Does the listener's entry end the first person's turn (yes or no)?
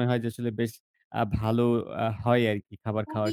yes